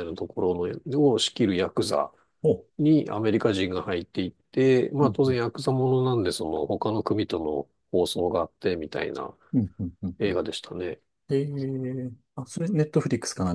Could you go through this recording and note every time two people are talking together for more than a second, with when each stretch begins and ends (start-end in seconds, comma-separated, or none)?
none